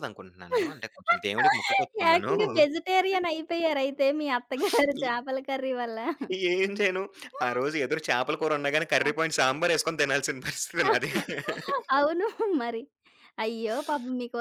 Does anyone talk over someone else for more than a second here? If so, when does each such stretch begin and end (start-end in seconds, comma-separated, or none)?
none